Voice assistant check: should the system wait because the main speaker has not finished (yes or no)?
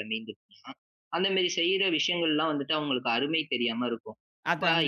yes